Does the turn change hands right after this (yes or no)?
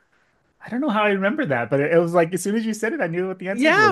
yes